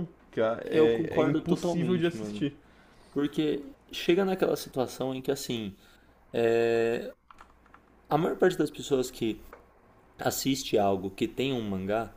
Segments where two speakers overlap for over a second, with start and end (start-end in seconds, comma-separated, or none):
0.6-2.4